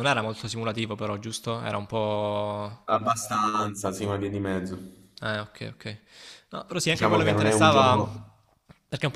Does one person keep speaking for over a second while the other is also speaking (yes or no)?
yes